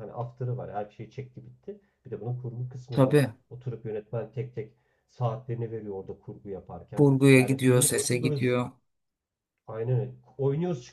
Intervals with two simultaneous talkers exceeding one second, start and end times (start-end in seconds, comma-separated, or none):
7.0-8.5